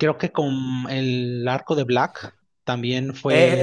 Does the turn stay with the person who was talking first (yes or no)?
no